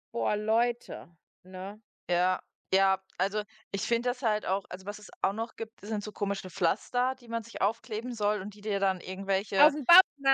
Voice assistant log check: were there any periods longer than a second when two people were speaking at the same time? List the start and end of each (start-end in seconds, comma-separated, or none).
none